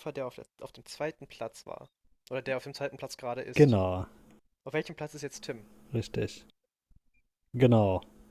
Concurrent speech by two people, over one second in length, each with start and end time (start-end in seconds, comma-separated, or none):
none